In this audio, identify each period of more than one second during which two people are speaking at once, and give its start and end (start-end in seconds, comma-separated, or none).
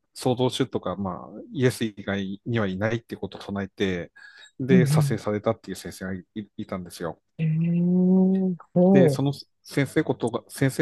none